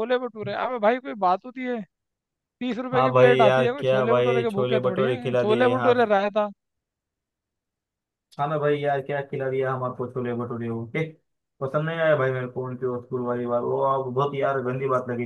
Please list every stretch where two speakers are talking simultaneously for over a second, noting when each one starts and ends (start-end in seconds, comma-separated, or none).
2.9-5.9